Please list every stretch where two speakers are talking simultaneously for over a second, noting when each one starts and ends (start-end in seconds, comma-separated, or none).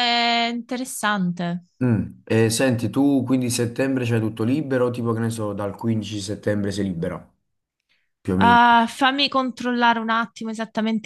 none